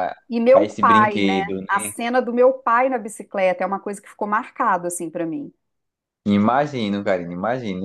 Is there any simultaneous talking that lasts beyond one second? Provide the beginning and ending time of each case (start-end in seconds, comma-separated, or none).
0.5-1.9